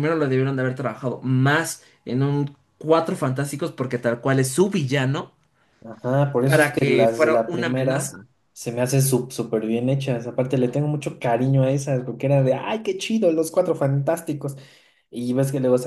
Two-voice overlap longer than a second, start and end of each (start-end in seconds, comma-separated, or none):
6.4-8.3